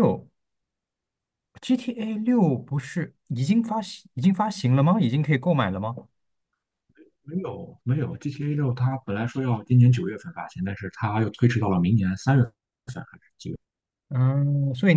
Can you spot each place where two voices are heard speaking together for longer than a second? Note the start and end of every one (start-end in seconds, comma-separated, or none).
none